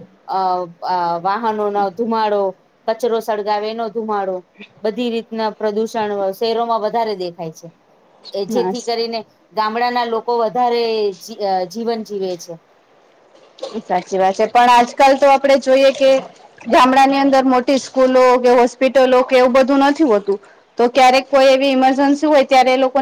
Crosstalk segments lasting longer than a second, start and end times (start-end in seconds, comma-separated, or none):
none